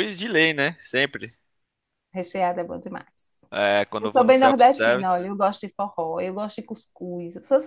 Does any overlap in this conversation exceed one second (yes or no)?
yes